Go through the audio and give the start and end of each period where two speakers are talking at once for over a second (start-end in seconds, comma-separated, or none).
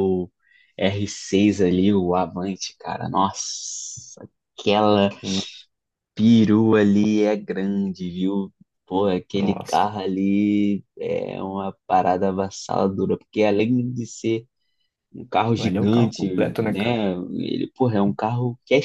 15.6-17.0